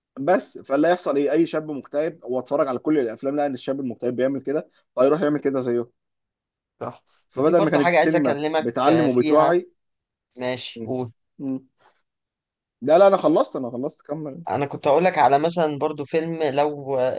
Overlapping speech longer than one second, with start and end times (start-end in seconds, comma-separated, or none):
7.3-9.5